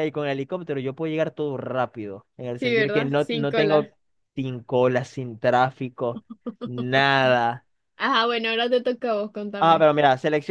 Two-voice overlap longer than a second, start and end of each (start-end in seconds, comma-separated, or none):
2.6-3.9